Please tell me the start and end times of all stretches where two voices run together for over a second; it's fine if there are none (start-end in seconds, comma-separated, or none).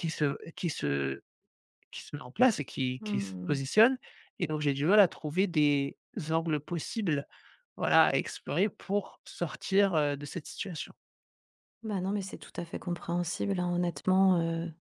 none